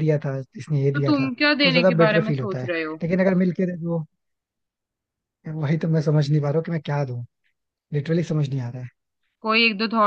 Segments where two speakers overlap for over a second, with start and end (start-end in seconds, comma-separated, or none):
0.9-3.0